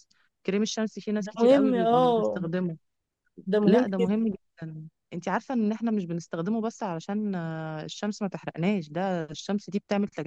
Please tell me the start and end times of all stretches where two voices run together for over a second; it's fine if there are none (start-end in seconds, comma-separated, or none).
1.2-2.4